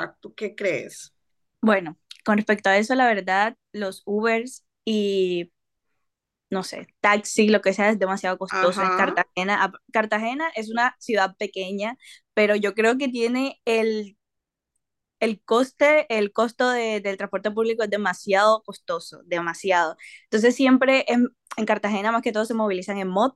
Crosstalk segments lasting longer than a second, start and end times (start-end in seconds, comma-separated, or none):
none